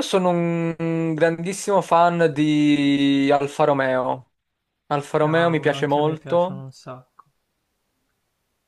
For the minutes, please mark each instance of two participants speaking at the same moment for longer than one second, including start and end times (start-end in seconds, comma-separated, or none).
5.2-6.6